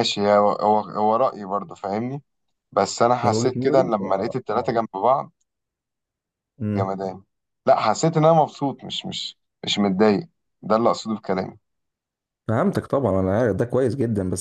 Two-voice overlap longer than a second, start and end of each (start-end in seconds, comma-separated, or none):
3.2-4.7